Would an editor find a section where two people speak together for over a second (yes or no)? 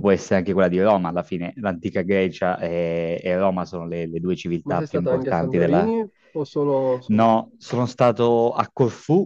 yes